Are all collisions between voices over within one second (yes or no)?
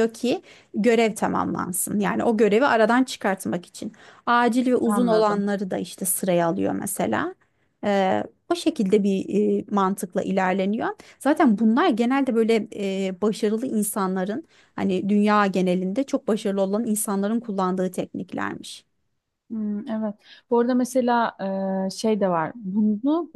yes